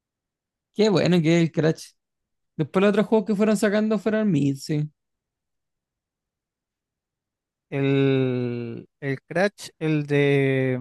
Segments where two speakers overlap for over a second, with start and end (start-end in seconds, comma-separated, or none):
none